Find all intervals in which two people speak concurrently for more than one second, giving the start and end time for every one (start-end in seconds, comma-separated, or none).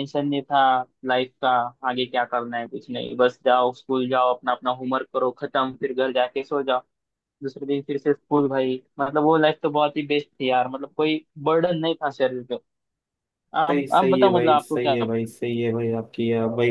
13.7-15.3